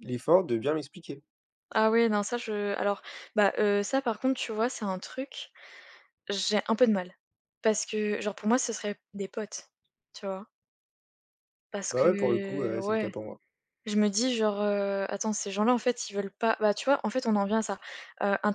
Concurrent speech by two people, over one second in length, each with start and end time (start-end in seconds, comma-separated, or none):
11.9-13.1